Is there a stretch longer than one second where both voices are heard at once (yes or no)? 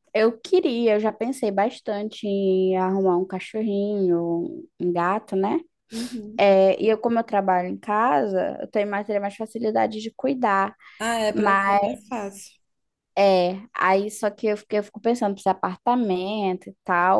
no